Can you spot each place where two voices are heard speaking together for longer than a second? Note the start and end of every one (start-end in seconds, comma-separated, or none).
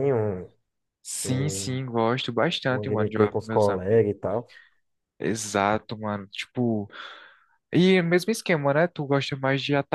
2.7-4.0